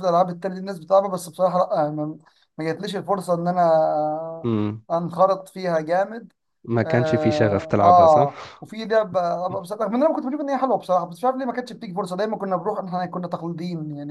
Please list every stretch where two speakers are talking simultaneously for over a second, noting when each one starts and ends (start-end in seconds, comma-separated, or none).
6.8-8.6